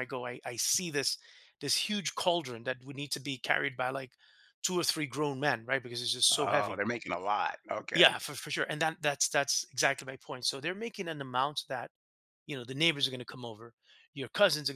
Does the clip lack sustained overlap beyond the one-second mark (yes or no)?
yes